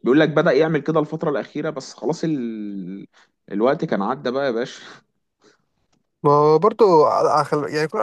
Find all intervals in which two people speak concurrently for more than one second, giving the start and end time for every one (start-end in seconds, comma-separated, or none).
none